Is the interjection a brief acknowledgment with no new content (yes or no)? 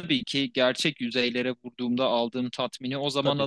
yes